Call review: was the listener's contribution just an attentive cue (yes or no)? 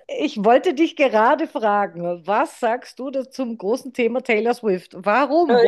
no